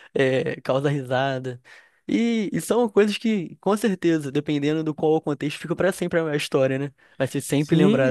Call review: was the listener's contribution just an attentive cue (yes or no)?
no